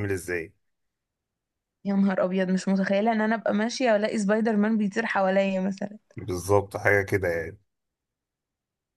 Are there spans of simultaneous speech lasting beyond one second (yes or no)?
no